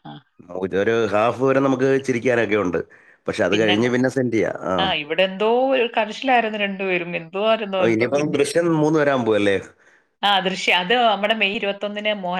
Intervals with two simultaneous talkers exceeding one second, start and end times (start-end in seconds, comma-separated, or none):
none